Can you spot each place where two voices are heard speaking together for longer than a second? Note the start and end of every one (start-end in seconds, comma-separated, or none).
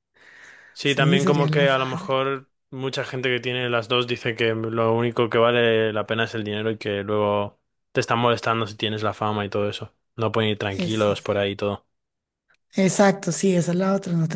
0.8-2.1